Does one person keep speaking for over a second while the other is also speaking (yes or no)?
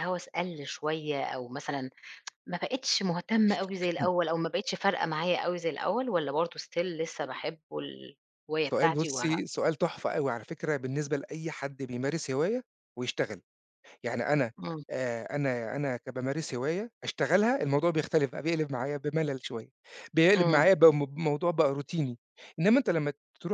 no